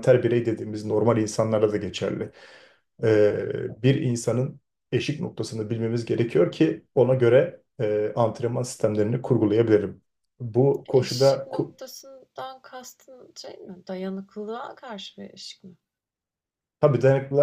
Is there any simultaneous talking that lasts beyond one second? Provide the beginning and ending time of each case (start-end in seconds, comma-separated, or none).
none